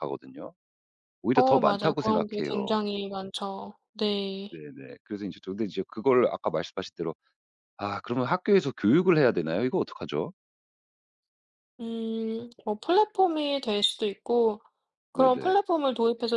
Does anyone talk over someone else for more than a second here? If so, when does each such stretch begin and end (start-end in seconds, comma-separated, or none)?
1.3-2.8